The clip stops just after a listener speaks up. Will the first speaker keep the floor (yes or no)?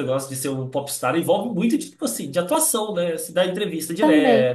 yes